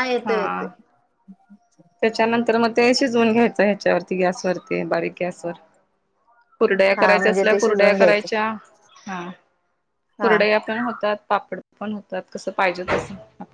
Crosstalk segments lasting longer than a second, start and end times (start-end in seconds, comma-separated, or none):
7.0-8.3